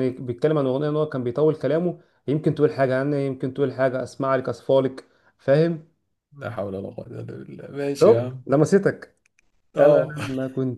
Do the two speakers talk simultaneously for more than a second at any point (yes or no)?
no